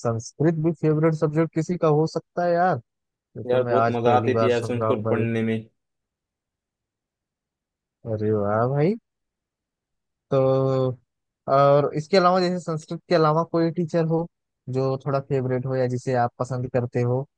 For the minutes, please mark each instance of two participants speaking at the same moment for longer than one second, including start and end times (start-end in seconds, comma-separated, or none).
3.5-5.3